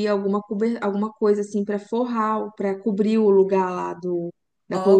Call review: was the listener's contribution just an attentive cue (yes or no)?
no